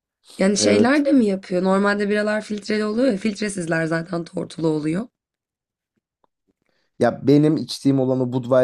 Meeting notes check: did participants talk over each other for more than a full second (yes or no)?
no